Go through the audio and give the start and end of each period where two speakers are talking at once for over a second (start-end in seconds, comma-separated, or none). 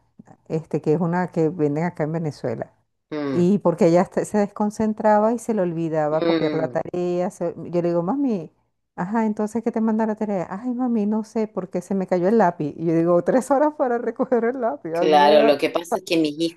none